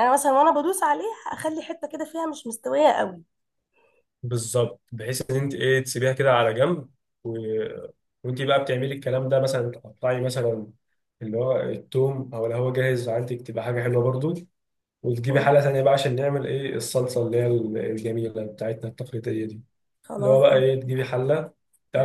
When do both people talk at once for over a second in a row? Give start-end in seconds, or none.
none